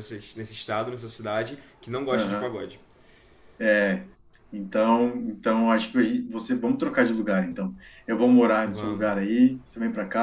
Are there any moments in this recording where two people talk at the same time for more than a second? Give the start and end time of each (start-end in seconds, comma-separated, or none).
none